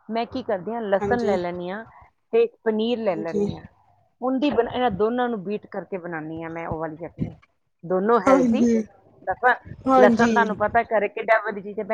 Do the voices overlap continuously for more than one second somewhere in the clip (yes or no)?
no